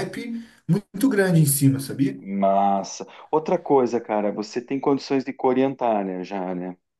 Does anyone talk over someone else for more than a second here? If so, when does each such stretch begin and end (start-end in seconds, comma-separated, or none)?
none